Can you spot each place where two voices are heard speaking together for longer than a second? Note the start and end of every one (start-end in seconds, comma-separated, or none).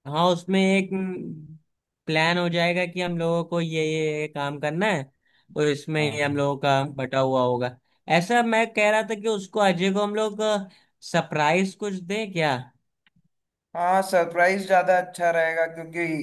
none